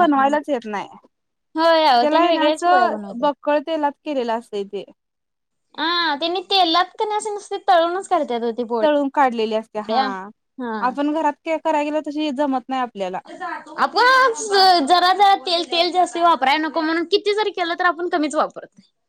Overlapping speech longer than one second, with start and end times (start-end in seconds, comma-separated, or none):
2.0-3.3